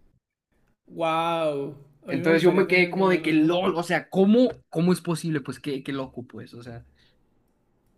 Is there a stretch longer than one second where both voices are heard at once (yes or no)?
yes